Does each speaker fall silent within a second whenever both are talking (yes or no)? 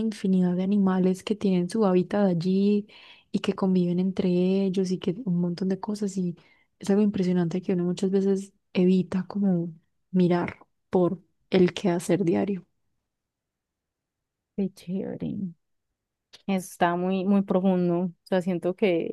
yes